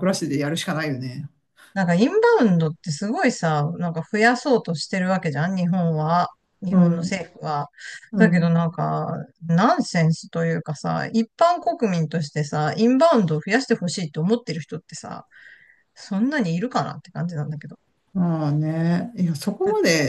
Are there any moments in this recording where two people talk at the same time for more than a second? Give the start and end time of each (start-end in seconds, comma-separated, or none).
none